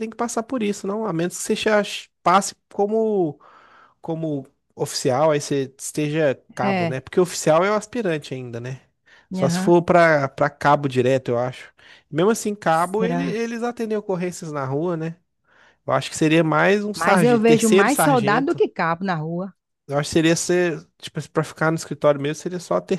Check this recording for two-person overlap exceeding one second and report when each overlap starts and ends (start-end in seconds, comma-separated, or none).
16.9-18.6